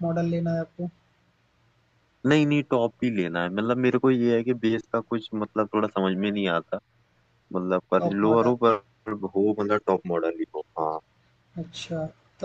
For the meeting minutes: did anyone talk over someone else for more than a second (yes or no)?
no